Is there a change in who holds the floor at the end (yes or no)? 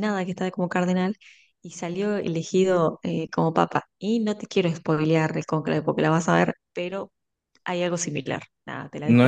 yes